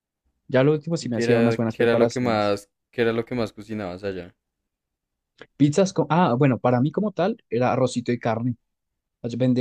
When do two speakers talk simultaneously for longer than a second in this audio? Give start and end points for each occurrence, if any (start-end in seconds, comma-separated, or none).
1.0-2.6